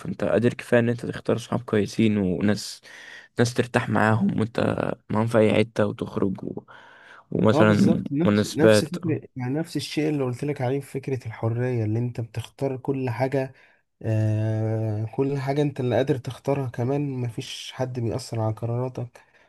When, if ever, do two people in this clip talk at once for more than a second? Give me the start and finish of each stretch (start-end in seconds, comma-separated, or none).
7.5-8.9